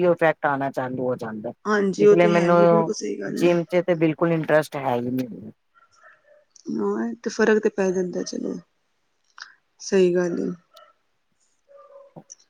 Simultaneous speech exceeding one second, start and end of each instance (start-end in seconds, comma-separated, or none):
none